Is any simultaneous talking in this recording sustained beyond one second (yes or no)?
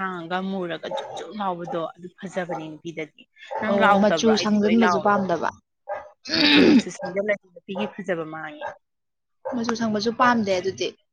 yes